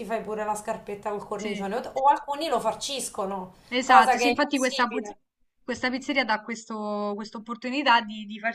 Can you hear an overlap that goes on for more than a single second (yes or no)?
yes